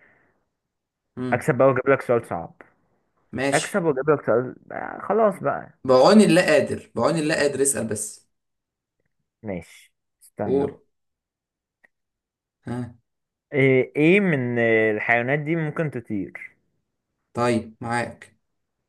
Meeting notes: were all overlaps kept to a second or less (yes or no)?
yes